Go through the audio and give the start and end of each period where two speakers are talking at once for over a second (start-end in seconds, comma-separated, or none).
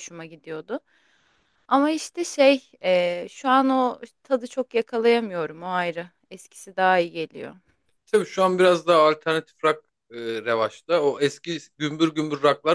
none